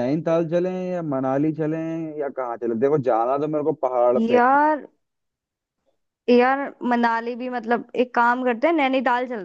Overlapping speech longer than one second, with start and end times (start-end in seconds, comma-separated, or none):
none